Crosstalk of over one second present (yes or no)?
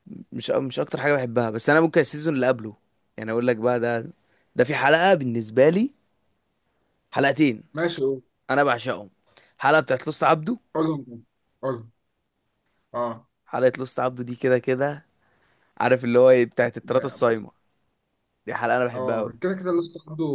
no